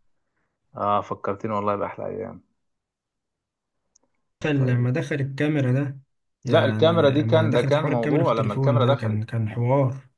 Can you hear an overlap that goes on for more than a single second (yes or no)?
yes